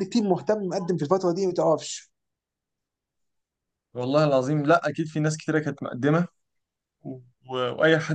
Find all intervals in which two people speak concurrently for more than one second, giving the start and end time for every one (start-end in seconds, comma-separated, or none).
none